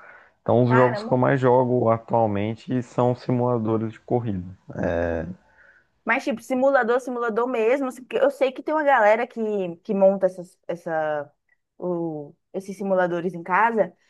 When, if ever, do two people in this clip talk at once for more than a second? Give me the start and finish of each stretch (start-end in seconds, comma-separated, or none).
none